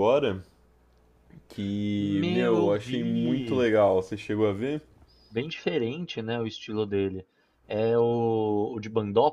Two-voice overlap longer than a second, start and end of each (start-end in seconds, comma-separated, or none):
2.0-3.6